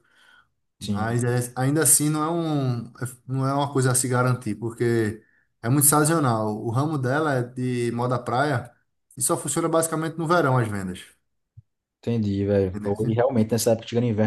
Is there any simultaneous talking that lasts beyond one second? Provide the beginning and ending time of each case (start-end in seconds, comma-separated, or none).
none